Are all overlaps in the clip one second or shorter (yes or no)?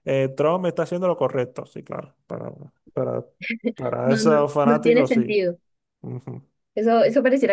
no